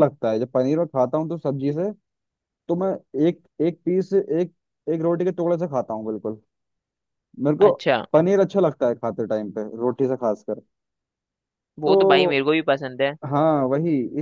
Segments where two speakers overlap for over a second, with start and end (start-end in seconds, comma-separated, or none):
none